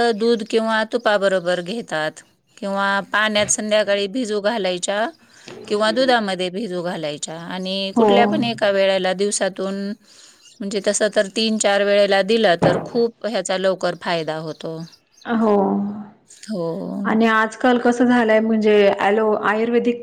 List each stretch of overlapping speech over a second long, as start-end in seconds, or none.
none